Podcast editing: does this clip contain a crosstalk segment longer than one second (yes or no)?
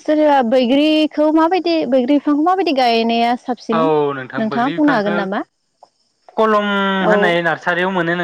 no